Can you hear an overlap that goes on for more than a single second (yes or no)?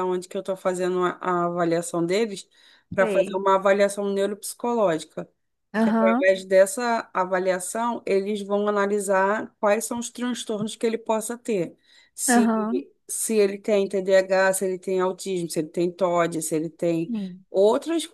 no